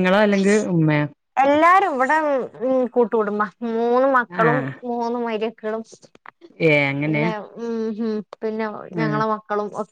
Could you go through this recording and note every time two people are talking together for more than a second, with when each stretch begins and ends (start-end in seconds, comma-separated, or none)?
none